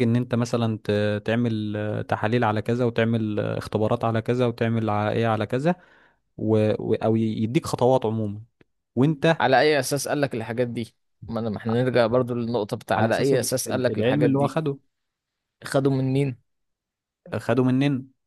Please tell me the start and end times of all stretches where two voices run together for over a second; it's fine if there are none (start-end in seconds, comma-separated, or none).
12.9-14.6